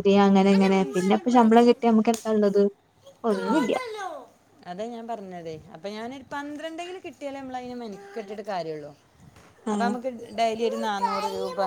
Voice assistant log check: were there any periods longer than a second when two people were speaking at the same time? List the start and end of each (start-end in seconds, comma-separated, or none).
0.5-2.0